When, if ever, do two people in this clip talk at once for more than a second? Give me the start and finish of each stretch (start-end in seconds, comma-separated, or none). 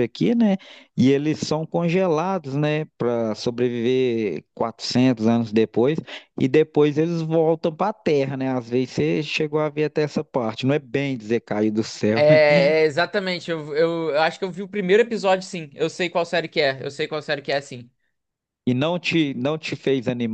none